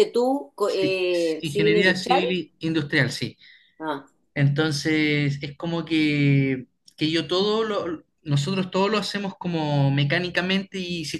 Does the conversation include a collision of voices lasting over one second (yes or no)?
yes